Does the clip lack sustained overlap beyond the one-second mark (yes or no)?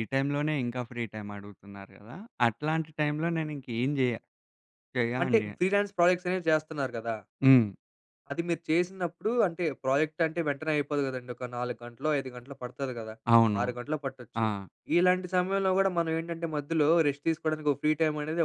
yes